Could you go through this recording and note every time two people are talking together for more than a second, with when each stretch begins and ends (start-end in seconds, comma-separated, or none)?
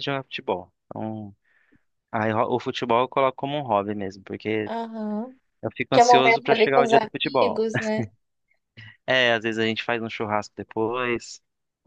5.9-7.6